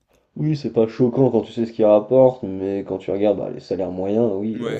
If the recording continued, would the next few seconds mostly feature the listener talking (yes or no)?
yes